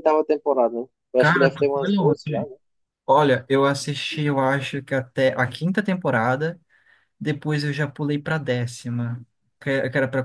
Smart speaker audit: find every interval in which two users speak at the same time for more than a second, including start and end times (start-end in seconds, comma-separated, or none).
1.2-2.4